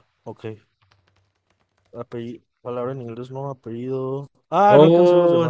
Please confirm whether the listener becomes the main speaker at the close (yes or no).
yes